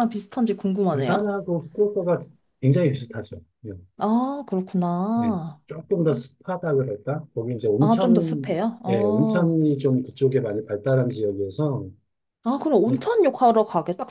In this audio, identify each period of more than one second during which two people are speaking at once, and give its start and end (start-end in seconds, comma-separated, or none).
7.8-9.5